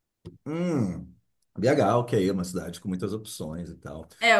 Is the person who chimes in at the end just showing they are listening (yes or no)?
no